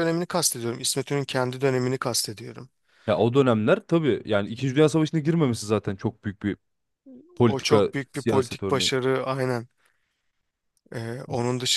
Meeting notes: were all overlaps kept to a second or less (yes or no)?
no